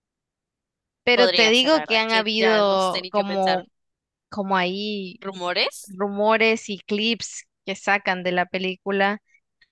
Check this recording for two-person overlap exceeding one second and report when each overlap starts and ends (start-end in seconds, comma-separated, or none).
1.1-3.6